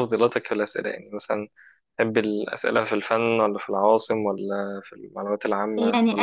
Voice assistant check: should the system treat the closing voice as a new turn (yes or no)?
yes